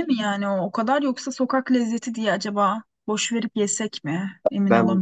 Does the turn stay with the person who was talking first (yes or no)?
no